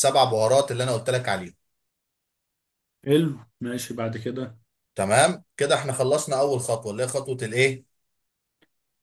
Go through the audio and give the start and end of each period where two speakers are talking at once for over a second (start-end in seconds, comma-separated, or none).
none